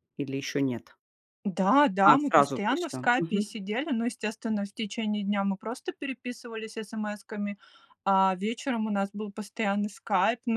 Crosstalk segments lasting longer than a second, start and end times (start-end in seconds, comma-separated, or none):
2.0-3.5